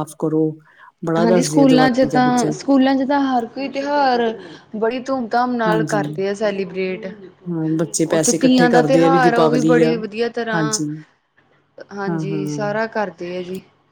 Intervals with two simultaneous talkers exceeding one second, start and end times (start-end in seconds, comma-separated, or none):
1.2-2.5, 8.2-9.9